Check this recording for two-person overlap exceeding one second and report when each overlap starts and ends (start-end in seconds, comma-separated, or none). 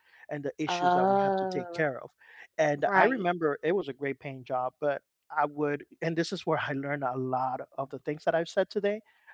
0.7-1.9